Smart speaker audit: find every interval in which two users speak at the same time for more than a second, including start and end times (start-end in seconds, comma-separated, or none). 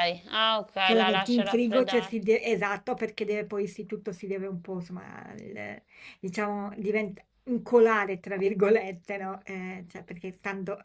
0.8-2.2